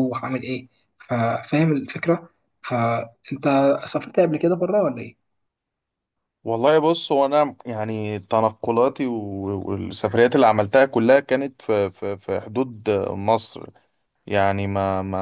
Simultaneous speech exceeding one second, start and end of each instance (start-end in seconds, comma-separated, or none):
none